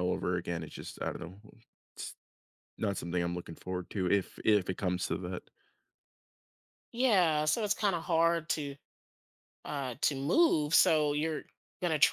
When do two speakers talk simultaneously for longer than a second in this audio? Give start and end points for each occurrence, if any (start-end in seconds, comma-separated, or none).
none